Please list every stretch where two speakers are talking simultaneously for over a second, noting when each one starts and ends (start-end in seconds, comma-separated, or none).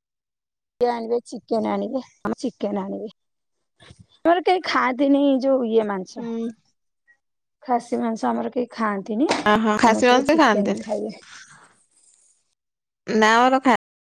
9.5-10.8